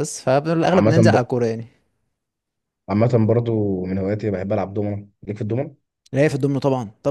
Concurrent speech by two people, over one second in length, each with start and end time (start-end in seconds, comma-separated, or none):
none